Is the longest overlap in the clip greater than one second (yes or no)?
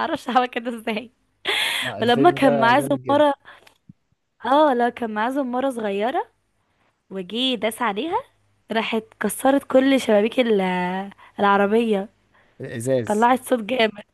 yes